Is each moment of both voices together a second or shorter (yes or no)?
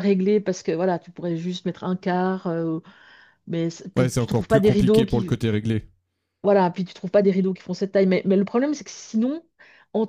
no